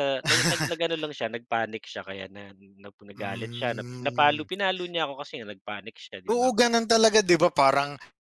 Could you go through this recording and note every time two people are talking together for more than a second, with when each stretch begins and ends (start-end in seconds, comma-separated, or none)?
3.1-4.5